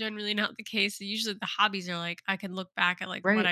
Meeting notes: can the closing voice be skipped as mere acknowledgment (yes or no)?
yes